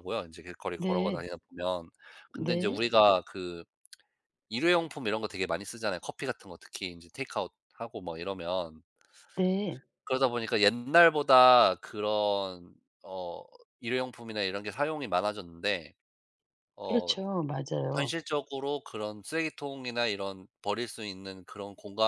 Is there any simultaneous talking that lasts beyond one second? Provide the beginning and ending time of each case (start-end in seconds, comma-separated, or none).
none